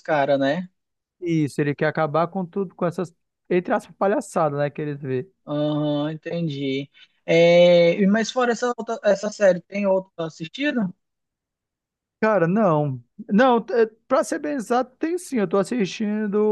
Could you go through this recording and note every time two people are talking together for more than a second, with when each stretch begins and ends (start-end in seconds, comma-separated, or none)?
none